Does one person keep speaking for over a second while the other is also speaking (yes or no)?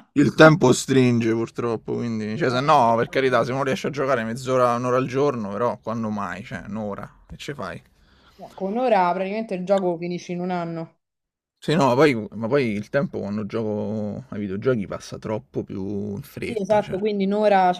no